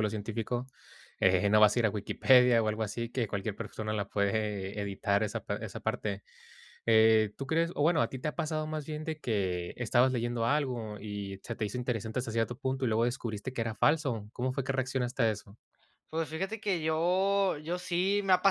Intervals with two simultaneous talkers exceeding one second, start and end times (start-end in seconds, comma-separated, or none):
none